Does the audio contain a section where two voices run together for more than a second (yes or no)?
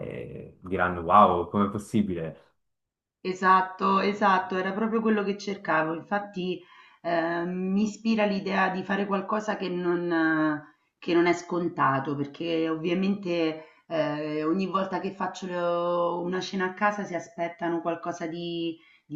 no